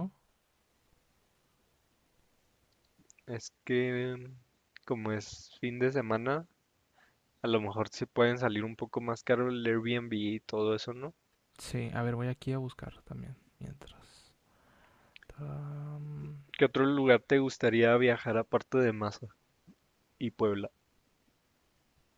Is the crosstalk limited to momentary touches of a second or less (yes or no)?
yes